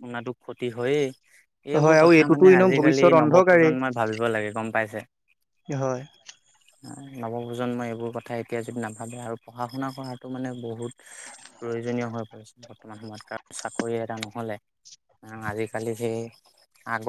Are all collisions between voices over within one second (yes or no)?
no